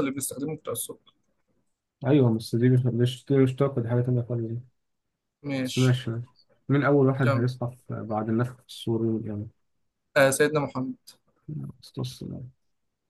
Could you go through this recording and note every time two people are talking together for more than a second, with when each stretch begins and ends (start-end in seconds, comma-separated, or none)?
none